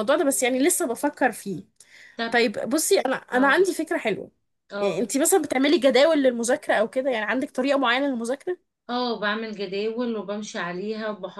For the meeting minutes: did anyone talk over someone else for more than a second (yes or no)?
no